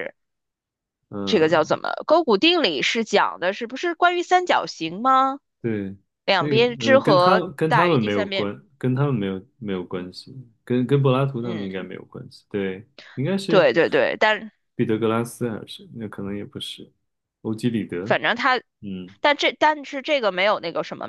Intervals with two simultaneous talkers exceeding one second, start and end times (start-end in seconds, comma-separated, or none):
6.4-8.5